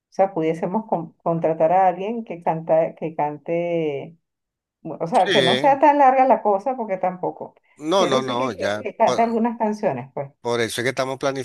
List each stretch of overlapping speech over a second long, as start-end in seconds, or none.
8.0-9.2